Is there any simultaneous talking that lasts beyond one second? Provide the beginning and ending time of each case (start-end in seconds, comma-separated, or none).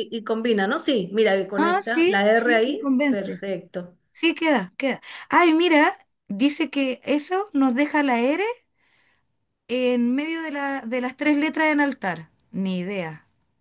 1.6-3.5